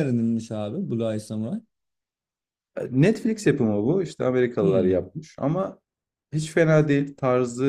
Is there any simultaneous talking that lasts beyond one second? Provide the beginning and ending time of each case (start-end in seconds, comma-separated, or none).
none